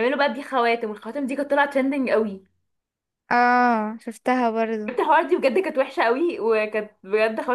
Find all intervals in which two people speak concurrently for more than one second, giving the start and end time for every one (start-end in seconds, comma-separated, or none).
none